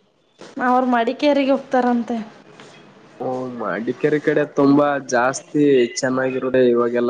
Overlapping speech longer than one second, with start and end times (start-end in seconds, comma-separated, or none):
none